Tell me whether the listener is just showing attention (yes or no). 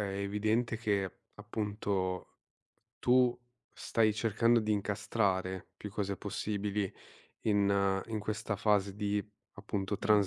yes